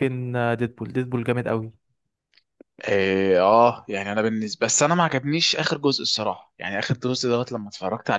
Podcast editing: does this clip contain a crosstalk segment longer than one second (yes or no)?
no